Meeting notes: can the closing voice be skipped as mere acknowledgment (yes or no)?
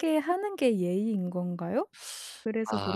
no